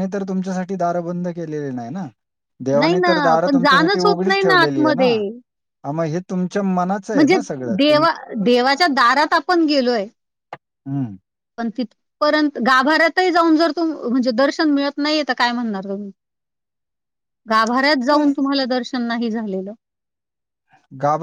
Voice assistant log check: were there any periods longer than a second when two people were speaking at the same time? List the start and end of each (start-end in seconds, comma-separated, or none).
2.8-5.1